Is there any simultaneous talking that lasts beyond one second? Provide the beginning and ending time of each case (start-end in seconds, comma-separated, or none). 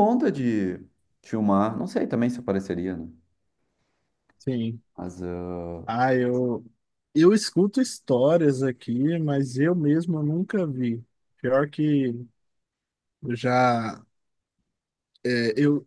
none